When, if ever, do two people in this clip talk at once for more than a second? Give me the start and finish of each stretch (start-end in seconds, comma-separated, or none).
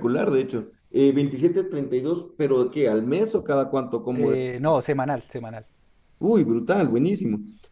none